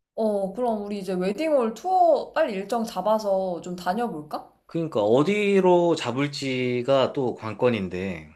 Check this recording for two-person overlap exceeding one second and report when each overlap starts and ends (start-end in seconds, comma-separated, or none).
none